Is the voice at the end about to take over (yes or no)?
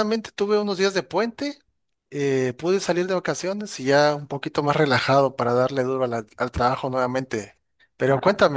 no